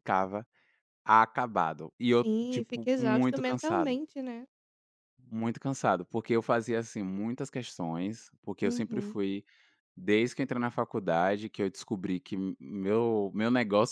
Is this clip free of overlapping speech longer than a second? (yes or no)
no